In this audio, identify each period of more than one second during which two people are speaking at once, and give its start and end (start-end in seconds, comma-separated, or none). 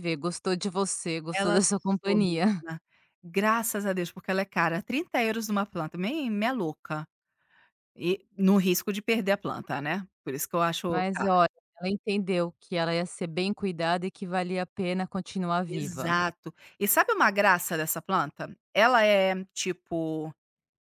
1.3-2.6